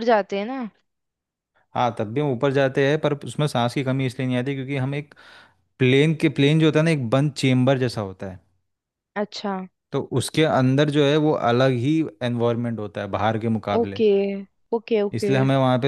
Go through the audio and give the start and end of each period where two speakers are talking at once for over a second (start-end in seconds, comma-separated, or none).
none